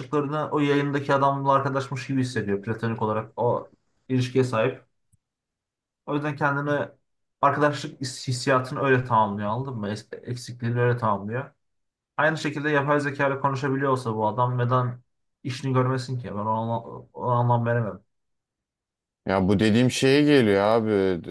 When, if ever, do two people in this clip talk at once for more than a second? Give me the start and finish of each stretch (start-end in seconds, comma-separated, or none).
none